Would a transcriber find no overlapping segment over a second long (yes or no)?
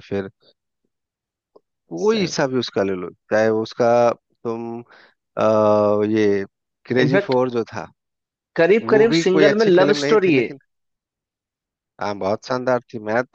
no